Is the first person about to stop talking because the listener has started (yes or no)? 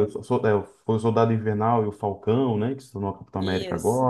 no